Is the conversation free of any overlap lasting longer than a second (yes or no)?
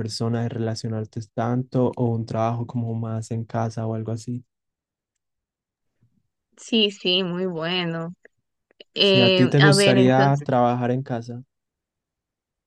no